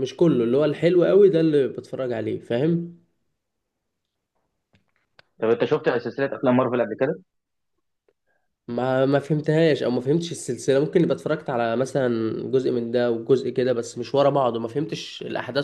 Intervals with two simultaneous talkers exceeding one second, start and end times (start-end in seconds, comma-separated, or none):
none